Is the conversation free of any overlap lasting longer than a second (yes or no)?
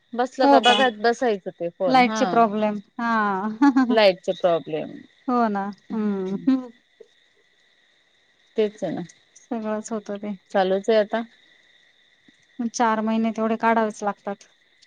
yes